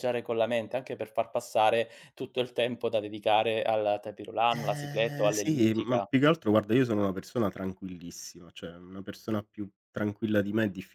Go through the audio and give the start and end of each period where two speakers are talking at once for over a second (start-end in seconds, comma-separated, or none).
4.5-6.1